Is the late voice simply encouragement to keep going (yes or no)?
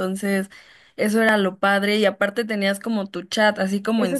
no